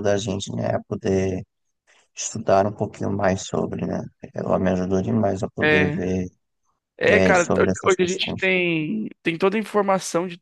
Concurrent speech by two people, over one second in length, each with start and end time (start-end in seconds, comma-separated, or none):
7.0-8.4